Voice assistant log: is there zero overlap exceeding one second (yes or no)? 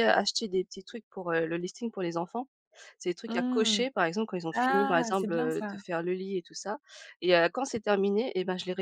no